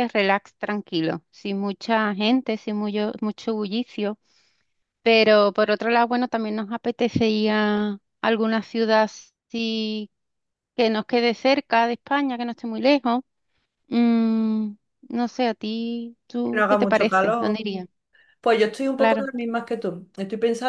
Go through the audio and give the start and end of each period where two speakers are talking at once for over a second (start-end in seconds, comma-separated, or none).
16.4-17.6